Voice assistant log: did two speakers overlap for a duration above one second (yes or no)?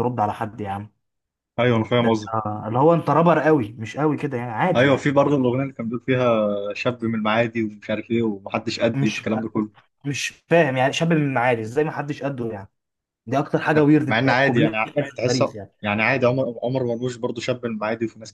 yes